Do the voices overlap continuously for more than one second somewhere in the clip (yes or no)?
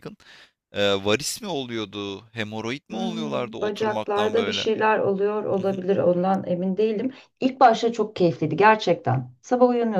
yes